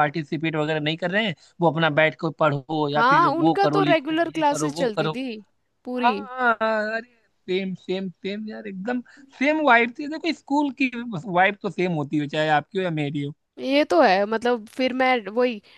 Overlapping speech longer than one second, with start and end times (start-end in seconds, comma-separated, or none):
3.0-5.1